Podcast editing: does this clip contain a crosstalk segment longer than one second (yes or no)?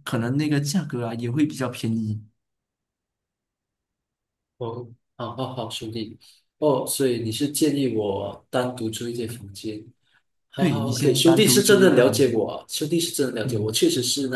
yes